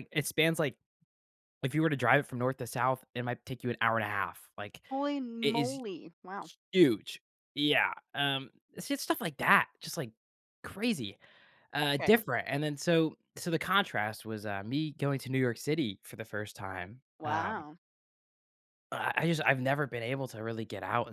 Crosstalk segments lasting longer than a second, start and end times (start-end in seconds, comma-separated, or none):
none